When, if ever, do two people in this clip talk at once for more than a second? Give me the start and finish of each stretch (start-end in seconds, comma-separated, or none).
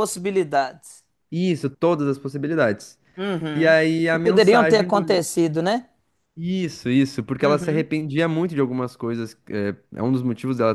3.5-5.0